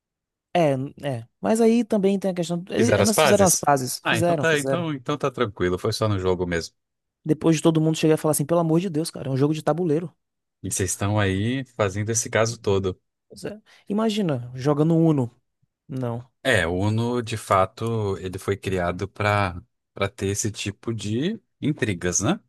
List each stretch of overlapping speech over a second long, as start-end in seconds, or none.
2.8-4.9